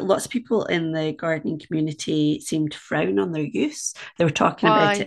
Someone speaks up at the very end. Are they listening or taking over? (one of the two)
listening